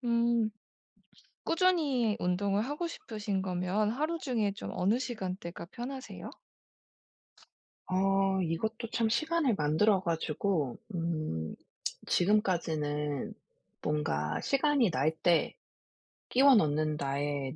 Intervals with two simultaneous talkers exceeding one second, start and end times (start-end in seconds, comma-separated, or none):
none